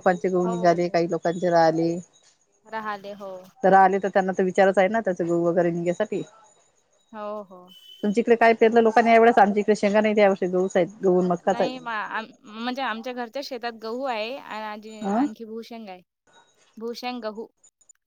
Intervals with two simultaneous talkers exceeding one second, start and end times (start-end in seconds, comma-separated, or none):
none